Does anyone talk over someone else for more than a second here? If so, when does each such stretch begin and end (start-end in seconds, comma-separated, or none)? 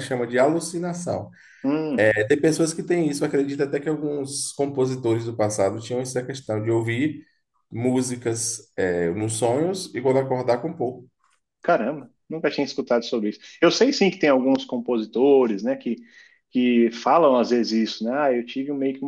none